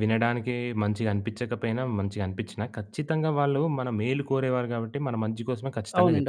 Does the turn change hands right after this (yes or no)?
yes